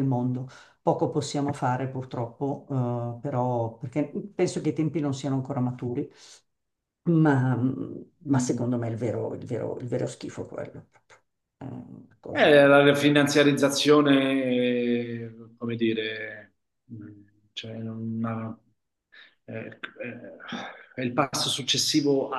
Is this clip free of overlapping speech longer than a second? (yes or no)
yes